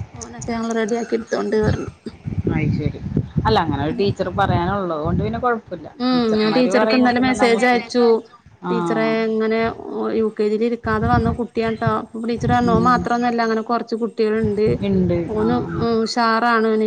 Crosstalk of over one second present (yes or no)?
no